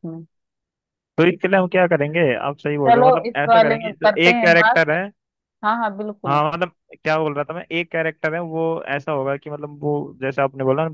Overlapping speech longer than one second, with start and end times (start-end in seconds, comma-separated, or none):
2.9-4.8